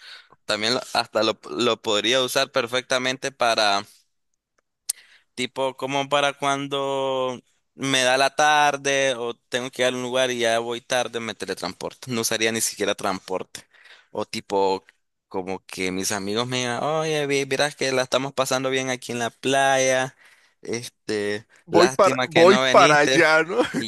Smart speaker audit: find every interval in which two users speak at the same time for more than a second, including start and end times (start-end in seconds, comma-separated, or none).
21.7-23.2